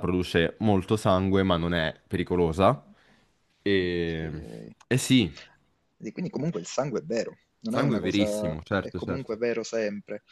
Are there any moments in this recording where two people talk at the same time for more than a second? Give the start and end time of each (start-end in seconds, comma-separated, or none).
7.7-9.4